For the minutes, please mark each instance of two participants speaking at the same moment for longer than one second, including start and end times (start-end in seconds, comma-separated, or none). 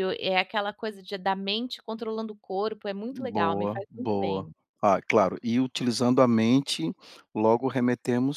3.1-4.5